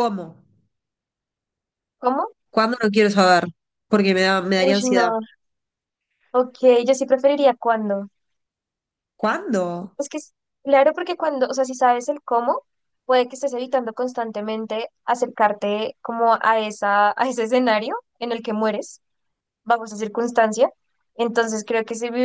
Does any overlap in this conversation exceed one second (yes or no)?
no